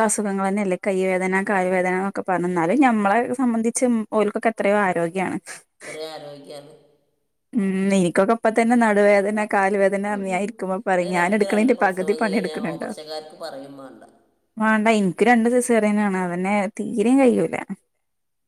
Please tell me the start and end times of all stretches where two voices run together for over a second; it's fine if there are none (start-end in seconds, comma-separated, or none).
11.0-12.9